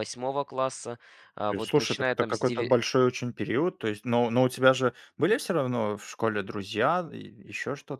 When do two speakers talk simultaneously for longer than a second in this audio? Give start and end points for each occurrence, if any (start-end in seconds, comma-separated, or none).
1.5-2.8